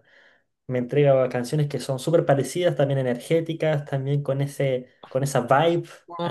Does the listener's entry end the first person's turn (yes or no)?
yes